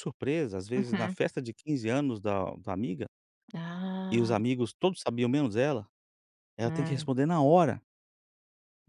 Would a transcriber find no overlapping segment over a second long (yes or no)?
yes